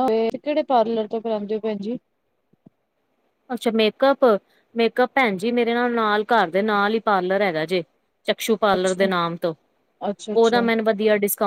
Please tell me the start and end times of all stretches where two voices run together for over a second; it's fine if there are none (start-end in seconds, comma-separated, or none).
none